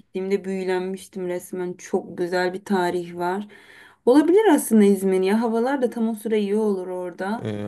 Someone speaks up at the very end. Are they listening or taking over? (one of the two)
taking over